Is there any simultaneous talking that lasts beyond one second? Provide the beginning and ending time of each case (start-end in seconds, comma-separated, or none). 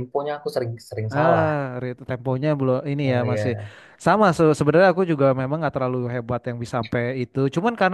none